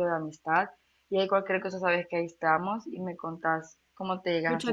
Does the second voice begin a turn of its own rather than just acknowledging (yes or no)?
yes